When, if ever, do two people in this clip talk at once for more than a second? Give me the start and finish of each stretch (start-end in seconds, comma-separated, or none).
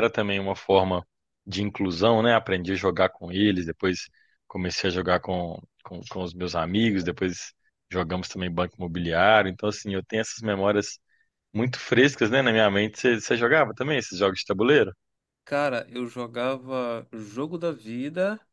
none